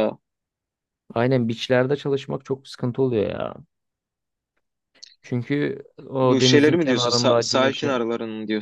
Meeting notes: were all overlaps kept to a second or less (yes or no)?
no